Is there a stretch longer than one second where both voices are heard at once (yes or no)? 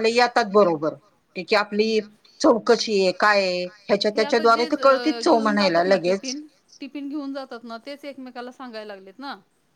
yes